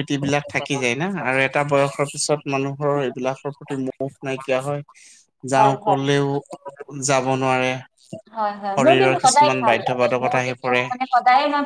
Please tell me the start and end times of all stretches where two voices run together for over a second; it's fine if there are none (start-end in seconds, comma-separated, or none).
8.7-10.8